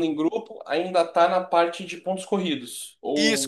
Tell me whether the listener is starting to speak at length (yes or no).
yes